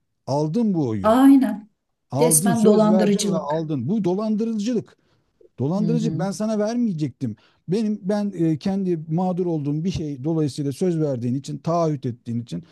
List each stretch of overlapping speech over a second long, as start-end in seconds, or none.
2.2-3.7